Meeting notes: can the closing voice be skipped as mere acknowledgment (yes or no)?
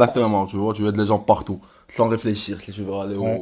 yes